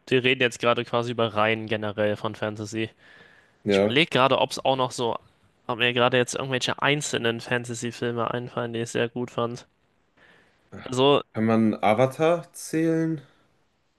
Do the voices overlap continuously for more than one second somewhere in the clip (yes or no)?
no